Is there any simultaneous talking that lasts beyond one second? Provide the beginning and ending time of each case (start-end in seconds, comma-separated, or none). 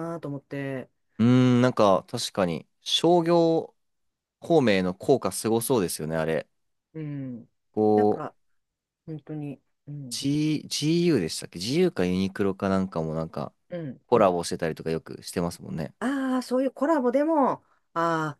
none